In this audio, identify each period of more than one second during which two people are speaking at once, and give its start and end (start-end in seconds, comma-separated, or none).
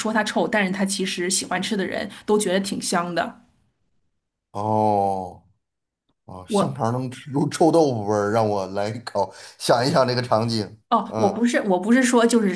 none